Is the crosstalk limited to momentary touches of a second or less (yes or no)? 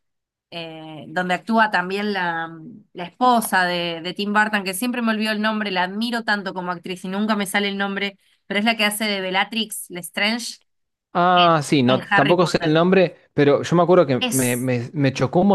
no